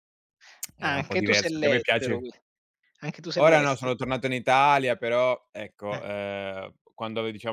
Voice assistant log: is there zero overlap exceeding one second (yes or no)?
no